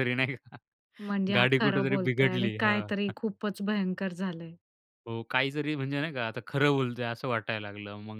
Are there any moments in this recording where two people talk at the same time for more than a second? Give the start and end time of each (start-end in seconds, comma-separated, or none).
1.4-3.1